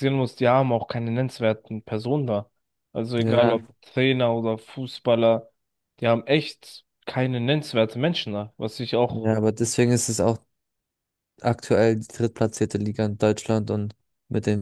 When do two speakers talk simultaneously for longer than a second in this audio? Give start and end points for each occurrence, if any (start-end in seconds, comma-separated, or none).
none